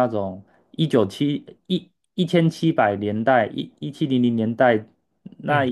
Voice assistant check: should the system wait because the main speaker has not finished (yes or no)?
yes